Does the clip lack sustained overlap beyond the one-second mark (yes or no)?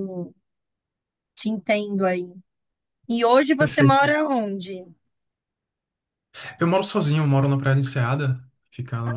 yes